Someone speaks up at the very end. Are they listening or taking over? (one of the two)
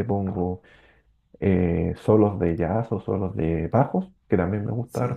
listening